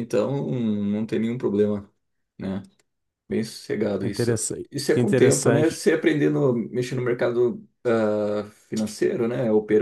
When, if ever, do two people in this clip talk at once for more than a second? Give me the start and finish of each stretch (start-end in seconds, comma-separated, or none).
4.0-5.8